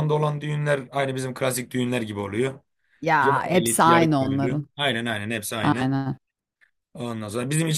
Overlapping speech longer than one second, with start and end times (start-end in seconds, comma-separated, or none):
3.2-4.7